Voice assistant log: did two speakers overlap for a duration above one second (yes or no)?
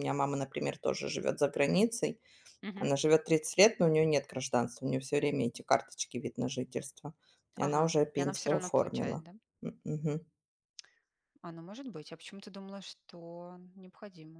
yes